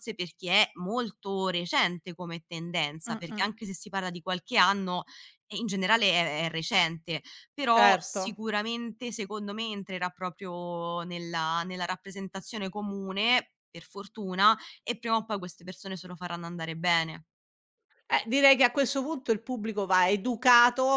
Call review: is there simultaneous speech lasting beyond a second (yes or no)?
no